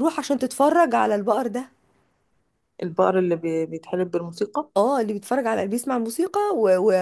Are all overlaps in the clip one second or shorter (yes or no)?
yes